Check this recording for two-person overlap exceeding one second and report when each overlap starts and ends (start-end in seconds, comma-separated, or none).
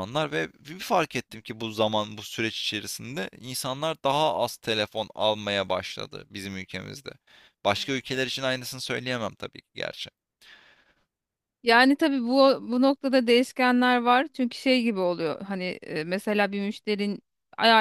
none